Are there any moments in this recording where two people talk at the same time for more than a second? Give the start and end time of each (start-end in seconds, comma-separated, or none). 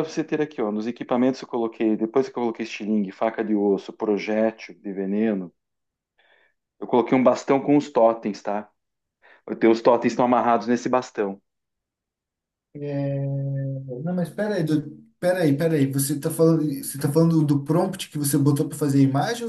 none